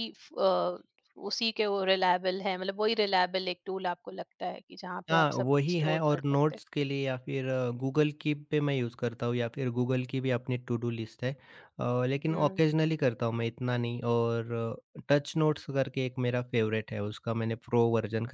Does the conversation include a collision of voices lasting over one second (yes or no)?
yes